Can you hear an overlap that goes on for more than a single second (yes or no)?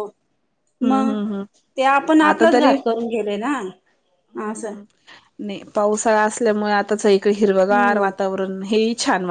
no